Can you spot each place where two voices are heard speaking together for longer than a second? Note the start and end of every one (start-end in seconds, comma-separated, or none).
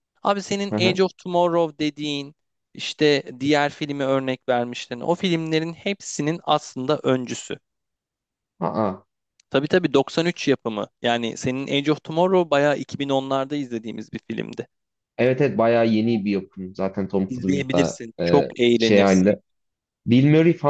17.3-19.3